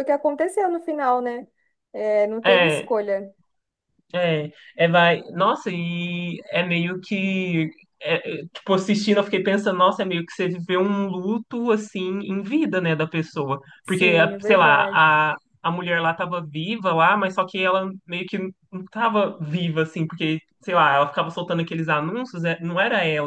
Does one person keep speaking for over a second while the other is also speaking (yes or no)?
yes